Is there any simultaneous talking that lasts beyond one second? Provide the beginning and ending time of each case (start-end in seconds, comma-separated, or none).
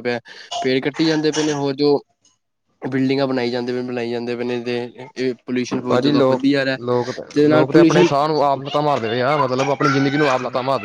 none